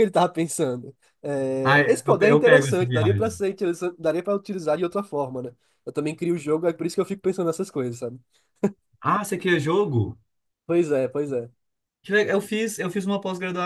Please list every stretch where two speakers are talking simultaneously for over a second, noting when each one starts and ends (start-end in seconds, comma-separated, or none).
1.6-3.3